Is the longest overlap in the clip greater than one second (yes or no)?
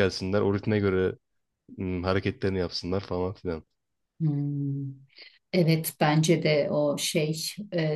no